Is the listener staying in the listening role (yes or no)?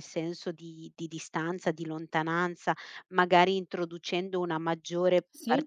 yes